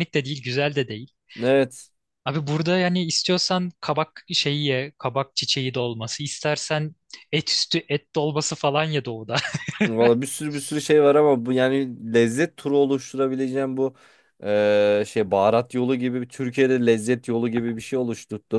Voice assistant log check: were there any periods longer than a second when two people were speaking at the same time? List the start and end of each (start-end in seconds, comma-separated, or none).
none